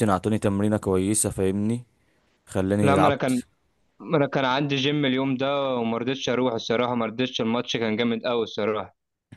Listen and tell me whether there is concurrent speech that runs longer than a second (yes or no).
no